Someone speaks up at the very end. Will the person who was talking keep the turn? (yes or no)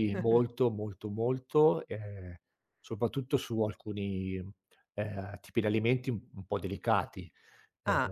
no